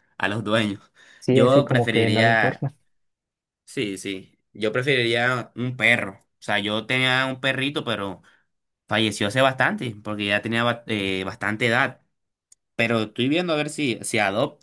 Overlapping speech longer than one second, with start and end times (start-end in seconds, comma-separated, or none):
1.3-2.7